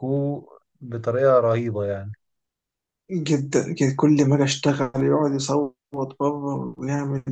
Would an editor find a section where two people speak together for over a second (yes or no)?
no